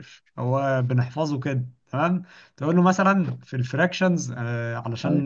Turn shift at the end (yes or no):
no